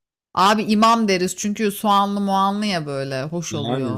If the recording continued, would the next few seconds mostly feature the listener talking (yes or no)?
yes